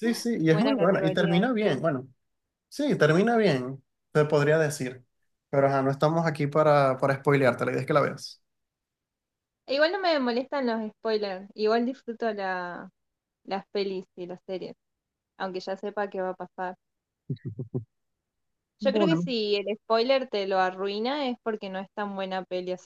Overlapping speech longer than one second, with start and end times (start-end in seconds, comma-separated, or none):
0.5-1.8